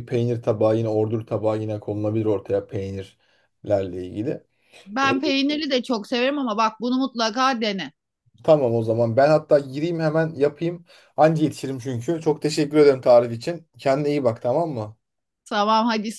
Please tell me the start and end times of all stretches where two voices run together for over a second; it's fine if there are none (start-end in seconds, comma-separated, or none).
none